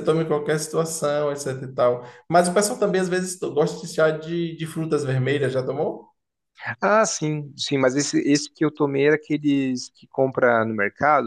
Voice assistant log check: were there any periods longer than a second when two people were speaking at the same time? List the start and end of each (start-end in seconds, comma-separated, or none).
none